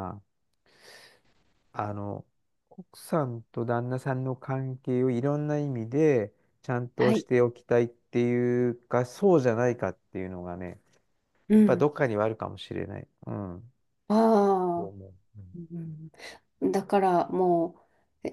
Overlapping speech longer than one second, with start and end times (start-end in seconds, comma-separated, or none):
none